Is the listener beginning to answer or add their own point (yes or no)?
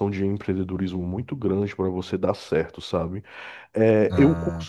no